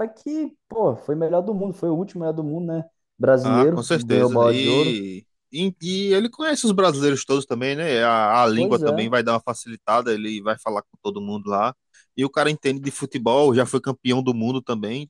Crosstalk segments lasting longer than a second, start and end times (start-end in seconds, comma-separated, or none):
3.4-5.0